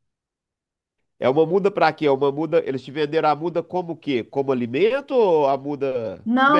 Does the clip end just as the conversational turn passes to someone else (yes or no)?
yes